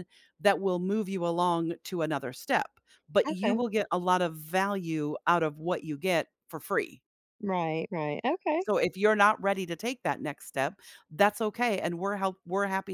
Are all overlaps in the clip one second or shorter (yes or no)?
yes